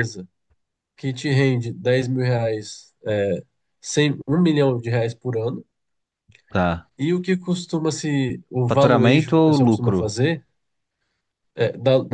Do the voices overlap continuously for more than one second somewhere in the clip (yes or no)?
yes